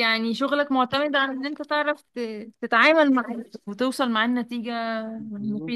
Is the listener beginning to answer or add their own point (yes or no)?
yes